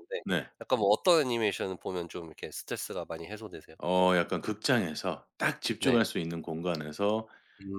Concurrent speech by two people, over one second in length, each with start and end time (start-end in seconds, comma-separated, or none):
none